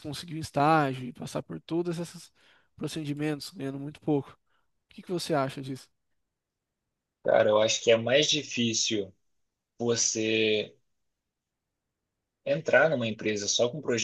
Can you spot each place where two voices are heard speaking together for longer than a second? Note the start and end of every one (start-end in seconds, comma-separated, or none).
none